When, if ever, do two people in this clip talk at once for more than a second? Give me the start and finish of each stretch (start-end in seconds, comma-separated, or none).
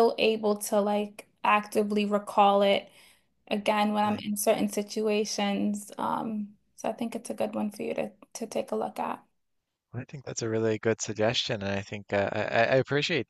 none